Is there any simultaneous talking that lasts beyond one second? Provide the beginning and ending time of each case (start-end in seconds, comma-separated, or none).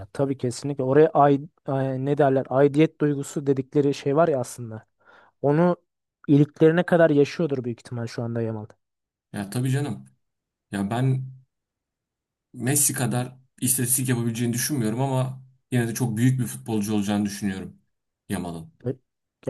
none